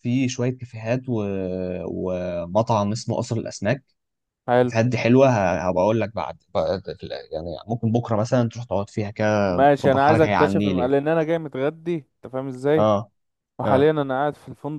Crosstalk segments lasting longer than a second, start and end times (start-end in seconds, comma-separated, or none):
9.5-10.9